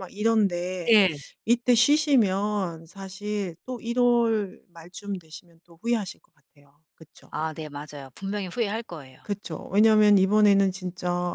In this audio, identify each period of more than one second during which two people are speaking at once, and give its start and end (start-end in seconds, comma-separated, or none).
none